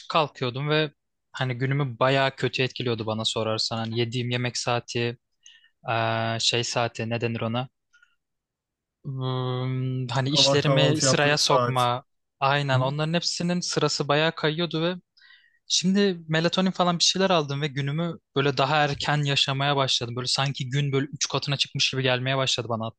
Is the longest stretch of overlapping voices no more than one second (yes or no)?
no